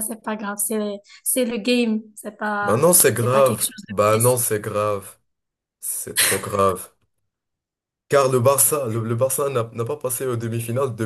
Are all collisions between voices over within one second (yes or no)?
no